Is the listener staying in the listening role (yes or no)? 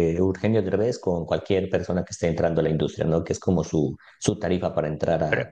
no